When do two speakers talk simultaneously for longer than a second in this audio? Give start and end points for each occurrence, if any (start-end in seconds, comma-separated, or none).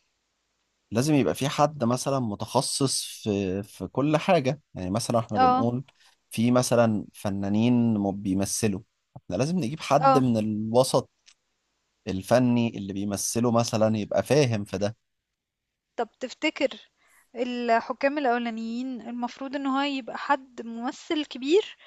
none